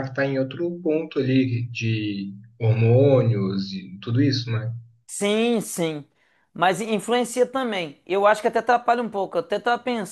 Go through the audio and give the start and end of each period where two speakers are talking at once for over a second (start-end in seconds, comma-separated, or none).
none